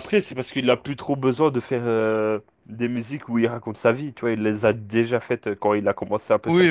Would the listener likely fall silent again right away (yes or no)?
no